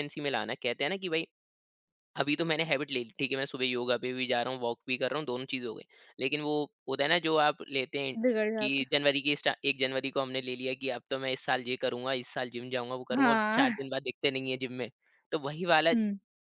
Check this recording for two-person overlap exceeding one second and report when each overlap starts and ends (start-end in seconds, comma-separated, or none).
none